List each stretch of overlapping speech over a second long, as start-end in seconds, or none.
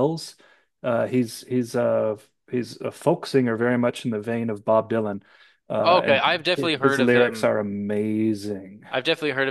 5.8-7.5